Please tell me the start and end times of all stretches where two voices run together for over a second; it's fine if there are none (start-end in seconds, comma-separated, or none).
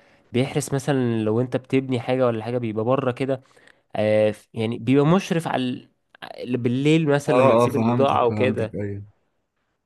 7.3-8.8